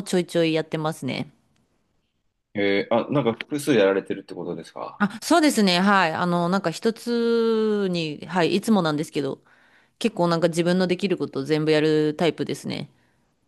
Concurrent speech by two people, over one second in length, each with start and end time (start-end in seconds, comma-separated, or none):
none